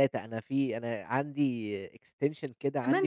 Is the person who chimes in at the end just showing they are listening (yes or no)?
yes